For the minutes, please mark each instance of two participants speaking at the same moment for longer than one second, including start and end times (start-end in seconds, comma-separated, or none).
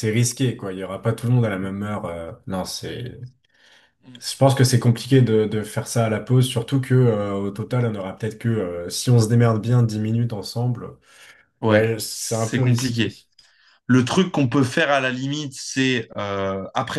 11.7-13.1